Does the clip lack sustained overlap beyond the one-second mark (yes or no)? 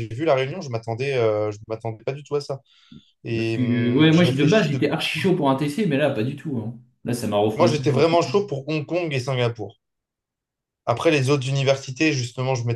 no